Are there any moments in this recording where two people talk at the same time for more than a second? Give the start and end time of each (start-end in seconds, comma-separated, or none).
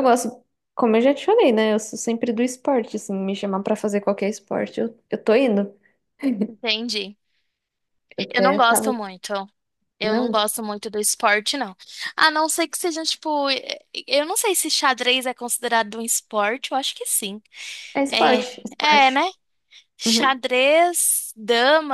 none